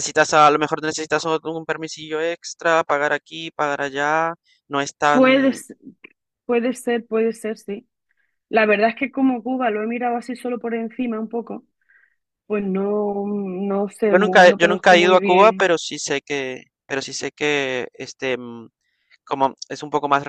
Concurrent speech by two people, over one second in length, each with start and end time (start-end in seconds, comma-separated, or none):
14.1-15.7